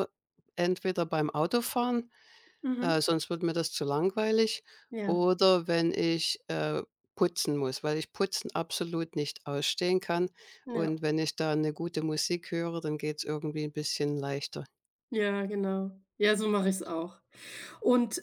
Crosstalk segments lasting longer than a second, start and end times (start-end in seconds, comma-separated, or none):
none